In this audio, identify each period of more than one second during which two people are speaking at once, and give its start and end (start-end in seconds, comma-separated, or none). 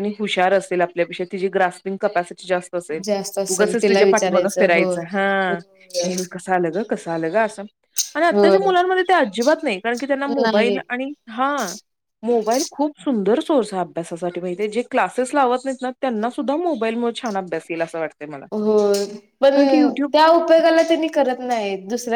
3.5-4.9